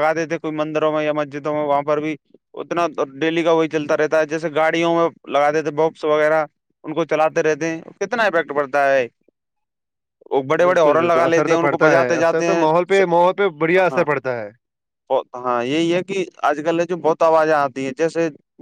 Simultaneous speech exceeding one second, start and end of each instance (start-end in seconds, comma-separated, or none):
10.6-12.7